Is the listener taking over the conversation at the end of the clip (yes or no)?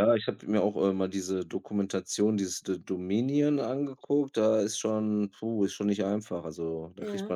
no